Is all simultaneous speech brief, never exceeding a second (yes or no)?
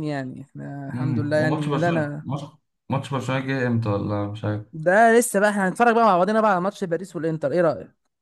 no